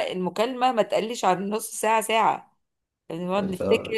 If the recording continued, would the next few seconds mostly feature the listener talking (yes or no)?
no